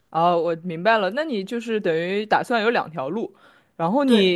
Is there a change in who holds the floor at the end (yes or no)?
no